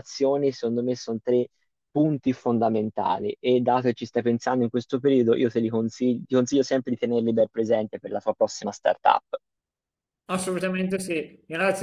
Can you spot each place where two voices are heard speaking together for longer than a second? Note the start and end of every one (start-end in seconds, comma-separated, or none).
none